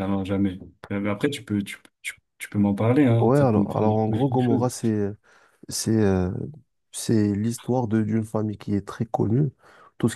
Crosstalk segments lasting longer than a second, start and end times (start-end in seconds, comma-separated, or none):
3.2-4.7